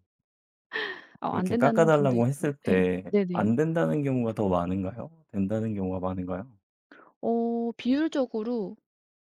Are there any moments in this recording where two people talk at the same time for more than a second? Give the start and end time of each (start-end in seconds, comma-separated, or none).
1.3-3.5